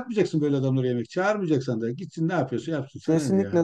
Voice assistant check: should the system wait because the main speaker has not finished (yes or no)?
no